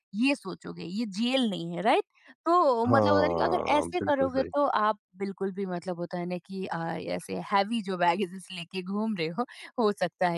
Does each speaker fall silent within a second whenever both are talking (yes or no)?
no